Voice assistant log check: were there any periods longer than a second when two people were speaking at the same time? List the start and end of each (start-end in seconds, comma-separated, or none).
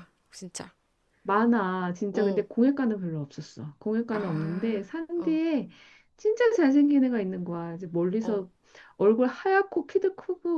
4.1-5.4